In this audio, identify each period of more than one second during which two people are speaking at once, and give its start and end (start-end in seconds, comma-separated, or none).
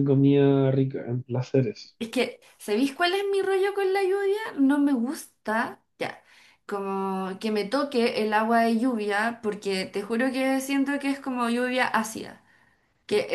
none